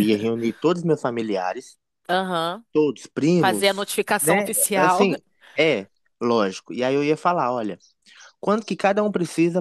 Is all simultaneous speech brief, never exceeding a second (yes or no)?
no